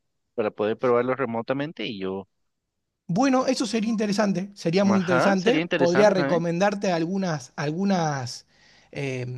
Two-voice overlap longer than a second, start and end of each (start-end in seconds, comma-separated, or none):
4.8-6.4